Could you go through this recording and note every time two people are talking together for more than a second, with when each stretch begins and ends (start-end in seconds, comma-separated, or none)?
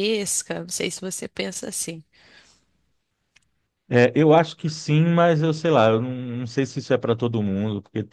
none